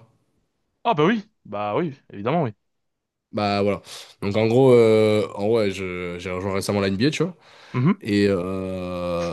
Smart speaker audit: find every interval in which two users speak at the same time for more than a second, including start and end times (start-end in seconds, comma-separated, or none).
none